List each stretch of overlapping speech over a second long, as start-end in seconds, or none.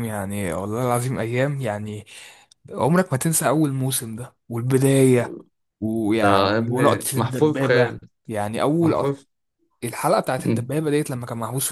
6.0-8.0